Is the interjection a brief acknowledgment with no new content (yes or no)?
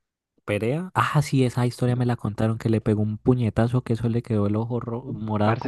no